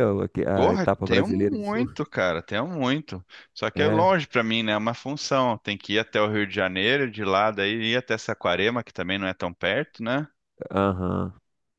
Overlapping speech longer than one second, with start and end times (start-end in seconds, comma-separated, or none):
0.5-1.9